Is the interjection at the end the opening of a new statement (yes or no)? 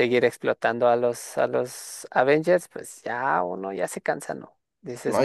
yes